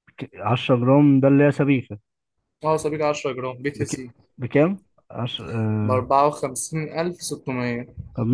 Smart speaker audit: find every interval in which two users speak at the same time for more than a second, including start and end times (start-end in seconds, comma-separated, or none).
none